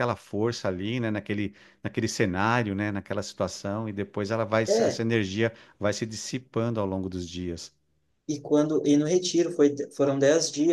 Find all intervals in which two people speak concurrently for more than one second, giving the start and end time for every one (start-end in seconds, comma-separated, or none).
none